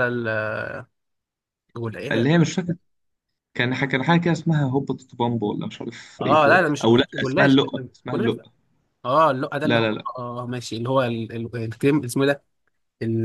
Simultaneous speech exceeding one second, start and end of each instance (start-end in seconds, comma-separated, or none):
6.2-8.5